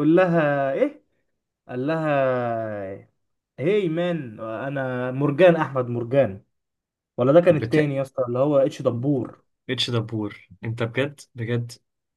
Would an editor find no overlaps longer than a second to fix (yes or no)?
yes